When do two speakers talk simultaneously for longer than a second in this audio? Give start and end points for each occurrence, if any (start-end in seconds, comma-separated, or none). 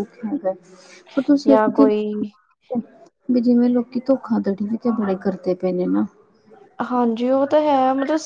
none